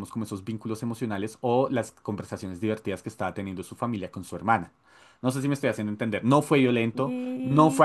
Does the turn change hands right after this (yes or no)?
no